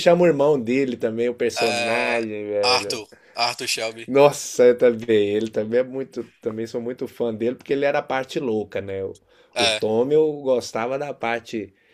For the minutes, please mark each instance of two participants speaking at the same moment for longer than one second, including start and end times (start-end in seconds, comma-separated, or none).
1.6-3.0